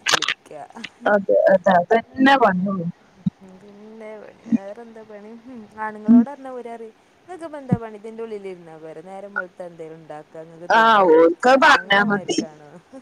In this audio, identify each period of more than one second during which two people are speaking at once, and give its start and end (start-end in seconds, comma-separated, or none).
10.8-12.4